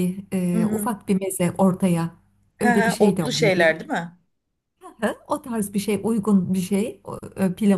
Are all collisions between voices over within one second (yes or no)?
no